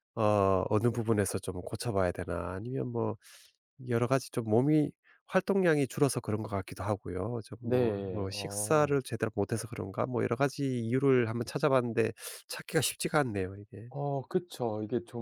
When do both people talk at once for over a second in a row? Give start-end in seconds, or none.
7.6-8.9